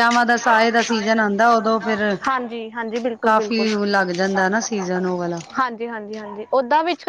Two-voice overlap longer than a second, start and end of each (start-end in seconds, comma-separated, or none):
none